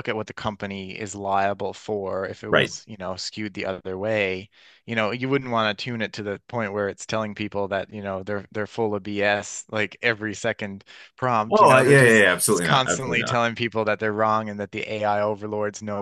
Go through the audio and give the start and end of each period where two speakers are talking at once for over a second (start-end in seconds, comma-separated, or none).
11.5-13.4